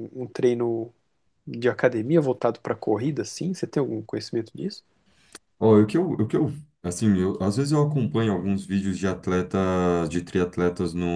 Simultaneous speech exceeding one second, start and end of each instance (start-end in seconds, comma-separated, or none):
none